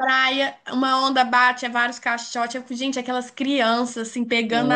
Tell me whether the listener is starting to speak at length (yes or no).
no